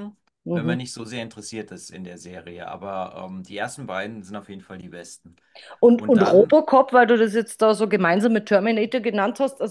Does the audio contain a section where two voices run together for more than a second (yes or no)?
no